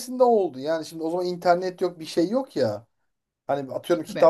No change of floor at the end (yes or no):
yes